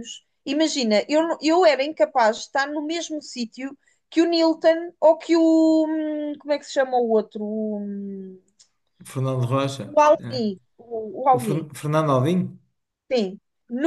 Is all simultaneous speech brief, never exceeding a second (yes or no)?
yes